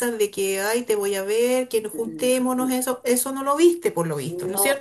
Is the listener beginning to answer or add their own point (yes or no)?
yes